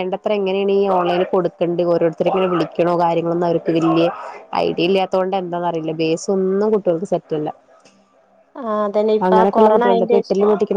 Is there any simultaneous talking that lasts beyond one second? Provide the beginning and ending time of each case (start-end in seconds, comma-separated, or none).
none